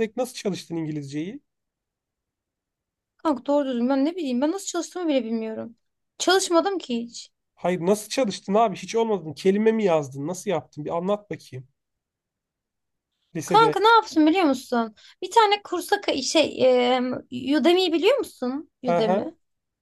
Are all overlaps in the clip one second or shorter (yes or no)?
yes